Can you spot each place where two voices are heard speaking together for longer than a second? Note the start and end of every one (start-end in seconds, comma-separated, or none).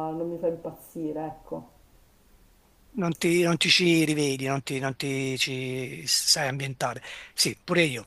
none